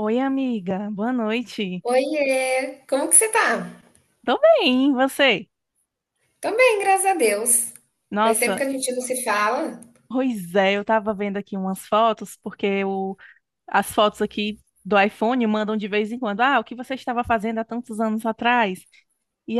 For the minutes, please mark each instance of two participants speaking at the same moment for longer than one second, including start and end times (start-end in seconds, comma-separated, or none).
none